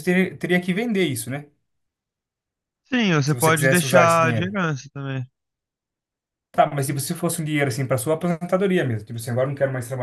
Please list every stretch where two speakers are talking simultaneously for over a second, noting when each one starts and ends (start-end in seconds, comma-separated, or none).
3.2-4.6